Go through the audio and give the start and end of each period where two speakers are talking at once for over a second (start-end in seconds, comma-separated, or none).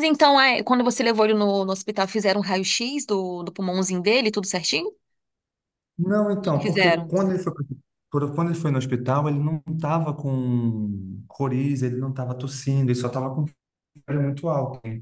none